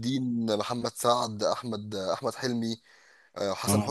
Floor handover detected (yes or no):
no